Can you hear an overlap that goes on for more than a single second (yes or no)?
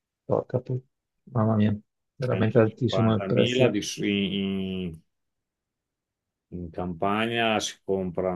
yes